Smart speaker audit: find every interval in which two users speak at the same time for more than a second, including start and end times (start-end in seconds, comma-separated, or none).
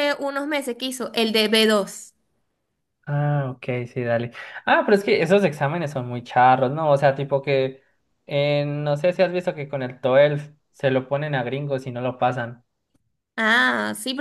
none